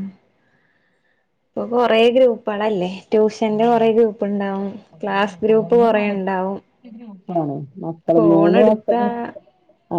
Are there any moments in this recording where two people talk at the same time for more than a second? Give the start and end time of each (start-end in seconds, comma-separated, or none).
none